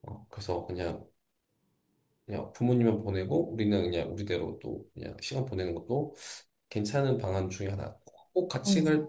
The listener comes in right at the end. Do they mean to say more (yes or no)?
no